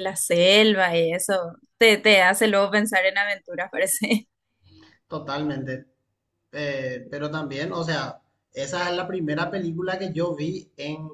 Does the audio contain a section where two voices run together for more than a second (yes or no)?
no